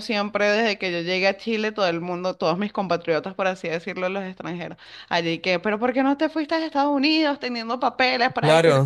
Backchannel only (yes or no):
no